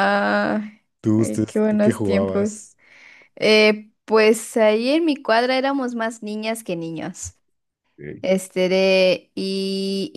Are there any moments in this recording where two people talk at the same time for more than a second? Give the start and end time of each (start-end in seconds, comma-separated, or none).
1.2-2.5